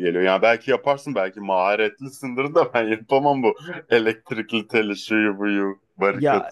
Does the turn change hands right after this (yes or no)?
yes